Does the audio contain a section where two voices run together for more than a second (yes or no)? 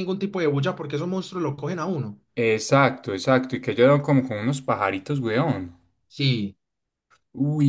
no